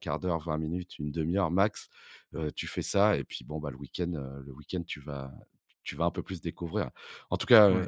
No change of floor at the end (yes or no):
yes